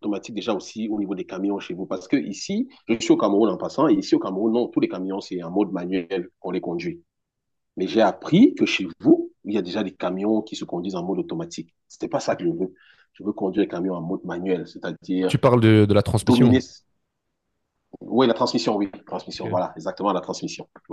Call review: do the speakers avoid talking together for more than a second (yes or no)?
yes